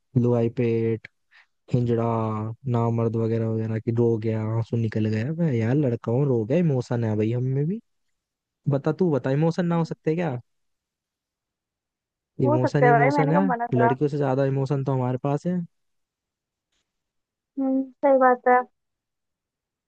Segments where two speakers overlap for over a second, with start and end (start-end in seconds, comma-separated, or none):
12.4-13.9